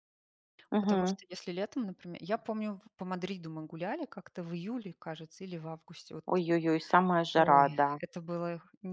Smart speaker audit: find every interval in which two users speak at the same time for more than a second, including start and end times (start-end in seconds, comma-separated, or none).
none